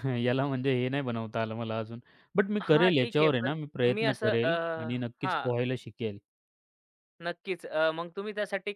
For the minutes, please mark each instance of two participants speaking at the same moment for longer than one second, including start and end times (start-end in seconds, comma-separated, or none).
2.6-4.5